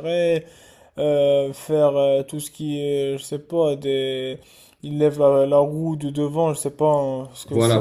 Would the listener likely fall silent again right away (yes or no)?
no